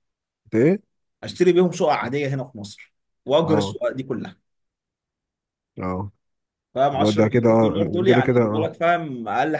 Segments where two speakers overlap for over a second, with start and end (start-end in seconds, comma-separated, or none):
6.9-8.7